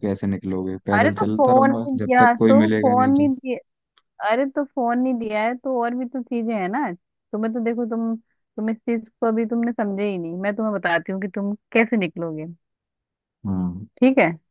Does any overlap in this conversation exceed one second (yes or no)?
yes